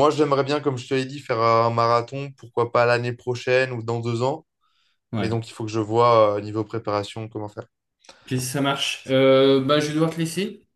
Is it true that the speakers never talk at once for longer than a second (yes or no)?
yes